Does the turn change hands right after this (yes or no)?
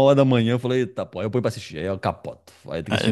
yes